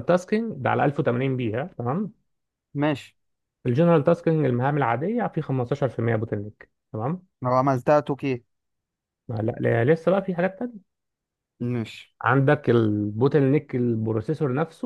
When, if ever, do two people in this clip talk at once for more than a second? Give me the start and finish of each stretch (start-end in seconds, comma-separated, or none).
none